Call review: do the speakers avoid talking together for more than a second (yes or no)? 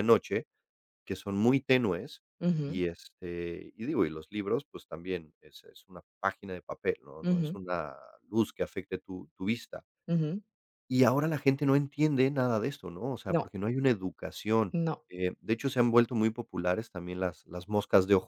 yes